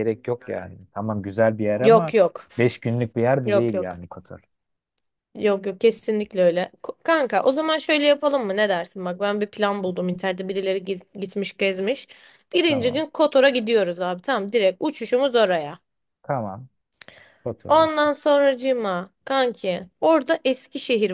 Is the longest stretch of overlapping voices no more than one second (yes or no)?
yes